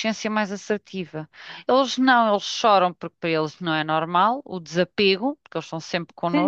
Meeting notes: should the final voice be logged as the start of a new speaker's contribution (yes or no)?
yes